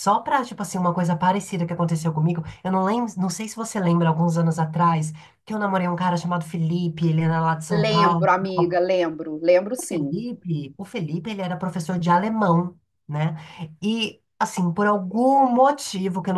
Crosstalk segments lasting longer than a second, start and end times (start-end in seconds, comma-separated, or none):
none